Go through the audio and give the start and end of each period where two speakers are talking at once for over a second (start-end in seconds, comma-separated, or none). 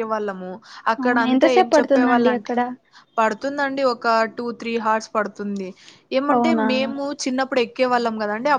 1.0-2.5